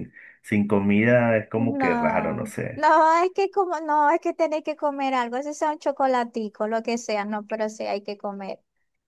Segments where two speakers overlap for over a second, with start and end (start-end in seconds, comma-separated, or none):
1.5-2.9